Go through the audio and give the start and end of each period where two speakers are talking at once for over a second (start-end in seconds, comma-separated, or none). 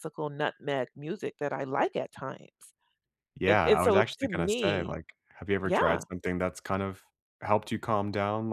3.5-5.0